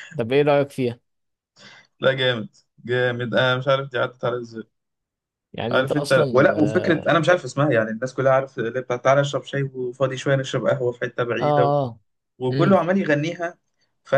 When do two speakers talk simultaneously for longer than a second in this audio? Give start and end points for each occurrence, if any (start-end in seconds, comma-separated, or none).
5.7-7.1